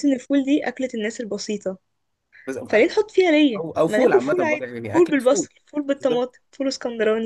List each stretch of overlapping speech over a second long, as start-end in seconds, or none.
3.6-5.5